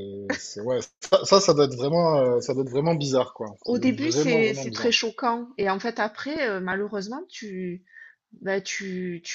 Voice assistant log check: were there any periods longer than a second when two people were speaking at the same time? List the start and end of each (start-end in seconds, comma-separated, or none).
3.6-4.9